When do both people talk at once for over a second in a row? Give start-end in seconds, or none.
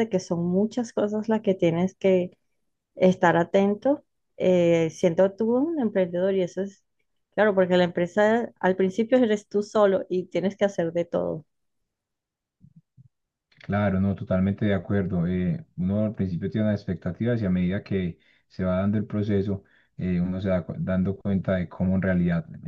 none